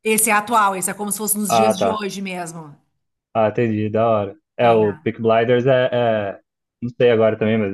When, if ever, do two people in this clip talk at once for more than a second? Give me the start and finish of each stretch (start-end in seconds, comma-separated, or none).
none